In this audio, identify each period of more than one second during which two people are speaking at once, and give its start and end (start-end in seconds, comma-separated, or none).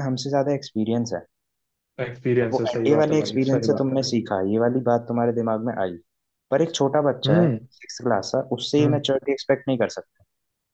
2.4-4.0